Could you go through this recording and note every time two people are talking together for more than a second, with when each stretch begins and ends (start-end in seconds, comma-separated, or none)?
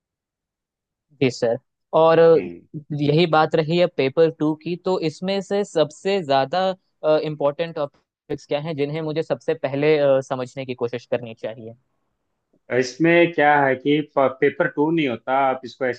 none